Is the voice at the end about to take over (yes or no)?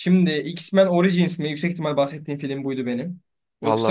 no